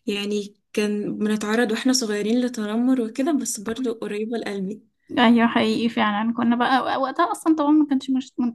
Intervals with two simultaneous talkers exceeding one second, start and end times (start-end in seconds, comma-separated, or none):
none